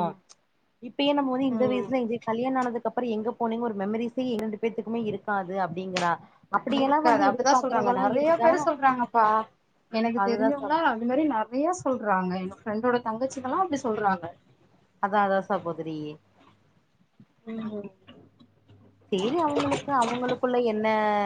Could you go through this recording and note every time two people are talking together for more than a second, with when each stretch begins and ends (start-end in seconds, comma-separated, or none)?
6.8-8.5